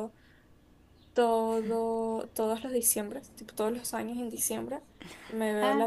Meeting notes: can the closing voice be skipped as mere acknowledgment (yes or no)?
yes